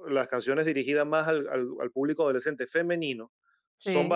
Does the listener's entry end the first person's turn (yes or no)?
no